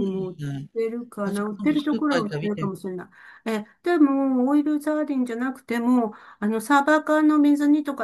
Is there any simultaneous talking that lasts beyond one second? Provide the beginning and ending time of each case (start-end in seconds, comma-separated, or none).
1.2-2.7